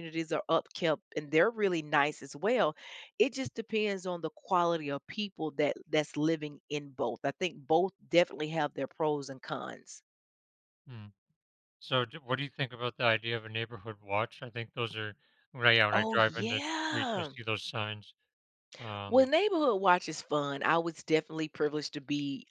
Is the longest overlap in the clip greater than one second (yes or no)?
yes